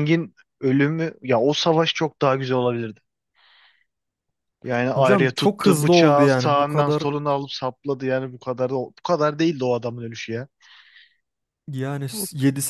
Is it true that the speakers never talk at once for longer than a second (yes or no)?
no